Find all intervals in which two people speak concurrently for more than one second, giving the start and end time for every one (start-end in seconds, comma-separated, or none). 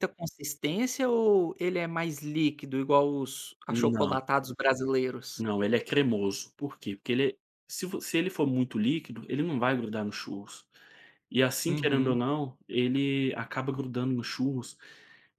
none